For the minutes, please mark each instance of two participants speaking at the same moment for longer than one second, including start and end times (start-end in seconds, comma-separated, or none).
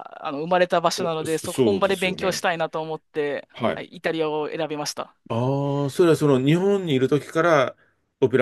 1.2-2.5